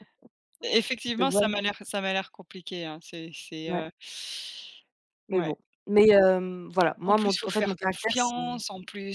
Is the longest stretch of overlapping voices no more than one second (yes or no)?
no